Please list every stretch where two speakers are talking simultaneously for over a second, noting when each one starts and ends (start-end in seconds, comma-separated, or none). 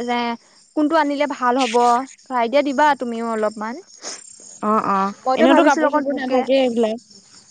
5.4-7.0